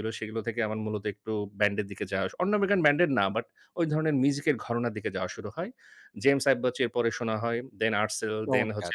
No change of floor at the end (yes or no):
yes